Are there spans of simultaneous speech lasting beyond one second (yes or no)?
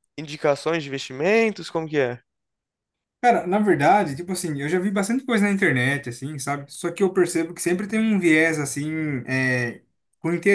no